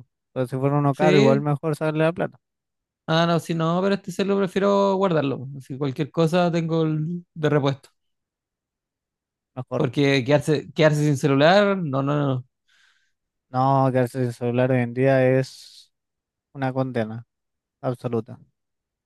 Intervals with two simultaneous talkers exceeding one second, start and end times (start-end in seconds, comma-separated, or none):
none